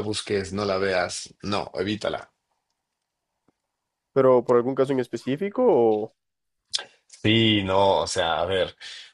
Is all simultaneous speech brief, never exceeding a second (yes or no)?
yes